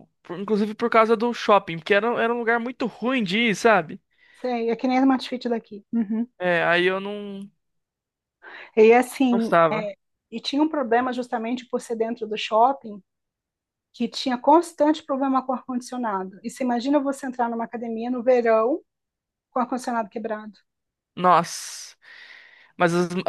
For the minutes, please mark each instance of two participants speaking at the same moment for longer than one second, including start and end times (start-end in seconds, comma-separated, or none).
none